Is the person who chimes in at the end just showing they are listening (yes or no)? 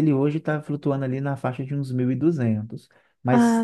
yes